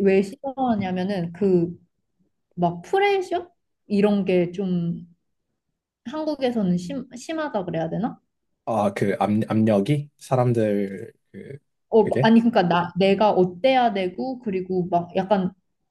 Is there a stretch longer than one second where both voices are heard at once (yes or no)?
no